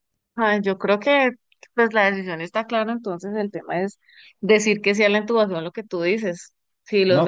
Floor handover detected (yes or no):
no